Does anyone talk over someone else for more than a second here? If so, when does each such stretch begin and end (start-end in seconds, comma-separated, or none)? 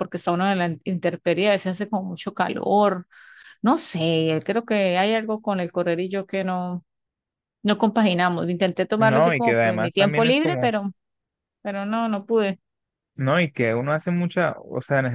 9.0-10.7